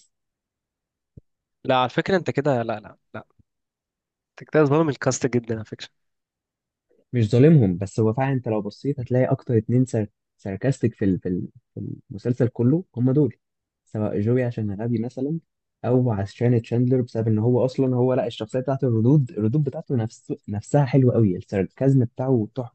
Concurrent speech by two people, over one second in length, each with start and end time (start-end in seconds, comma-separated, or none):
none